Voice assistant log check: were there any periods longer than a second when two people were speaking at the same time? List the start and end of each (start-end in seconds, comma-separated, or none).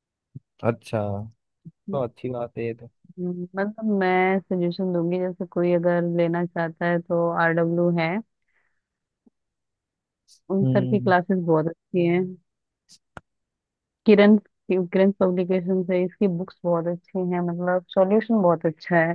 none